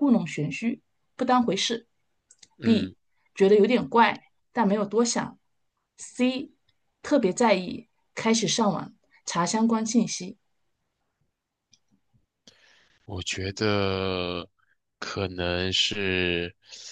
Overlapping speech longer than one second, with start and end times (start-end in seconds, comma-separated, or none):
none